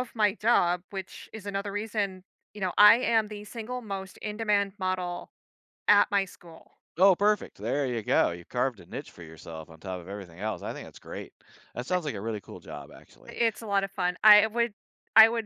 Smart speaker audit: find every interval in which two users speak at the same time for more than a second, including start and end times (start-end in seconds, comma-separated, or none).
none